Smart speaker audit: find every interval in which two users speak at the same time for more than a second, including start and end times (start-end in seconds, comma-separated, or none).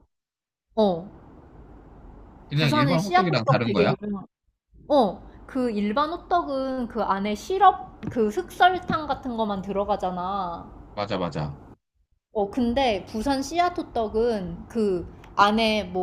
2.5-3.9